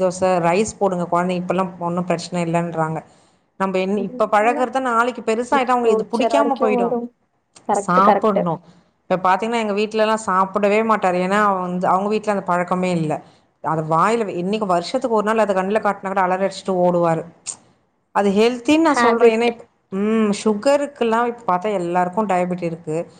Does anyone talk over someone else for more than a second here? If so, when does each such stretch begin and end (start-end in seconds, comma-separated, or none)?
5.7-7.0